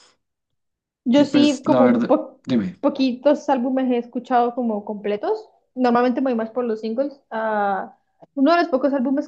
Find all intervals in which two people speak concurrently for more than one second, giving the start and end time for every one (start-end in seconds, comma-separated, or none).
1.1-2.4